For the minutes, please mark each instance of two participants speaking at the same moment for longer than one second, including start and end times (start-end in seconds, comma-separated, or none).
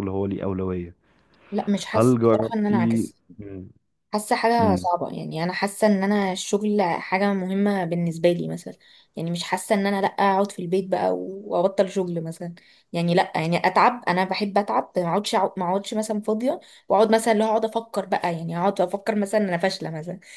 1.9-3.1